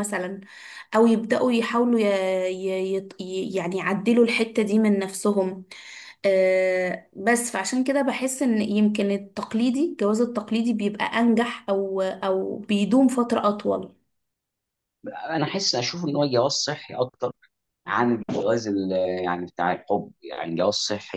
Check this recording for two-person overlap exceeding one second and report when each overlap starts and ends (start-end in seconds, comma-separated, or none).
none